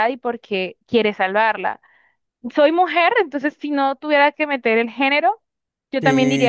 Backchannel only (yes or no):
no